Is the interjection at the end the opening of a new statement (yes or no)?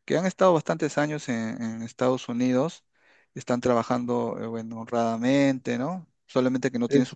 no